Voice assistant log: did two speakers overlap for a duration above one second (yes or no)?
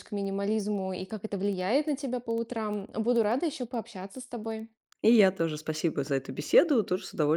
no